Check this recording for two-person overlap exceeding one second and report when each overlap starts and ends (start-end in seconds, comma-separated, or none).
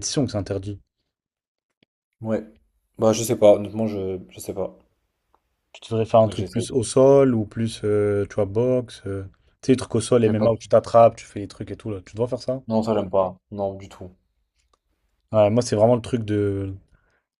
none